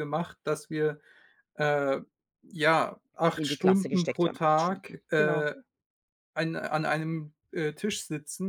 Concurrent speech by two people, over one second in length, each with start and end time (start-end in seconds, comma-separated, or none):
3.4-5.5